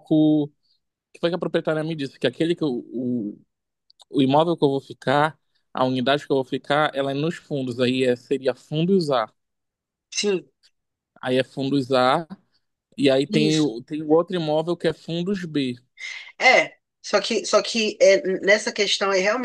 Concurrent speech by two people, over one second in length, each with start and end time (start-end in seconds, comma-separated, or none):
none